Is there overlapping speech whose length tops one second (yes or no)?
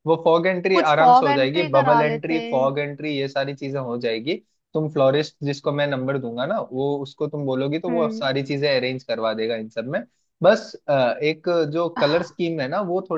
yes